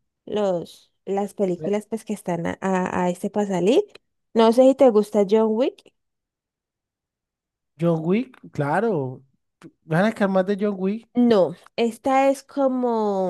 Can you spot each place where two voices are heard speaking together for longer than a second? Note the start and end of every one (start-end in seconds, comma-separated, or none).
none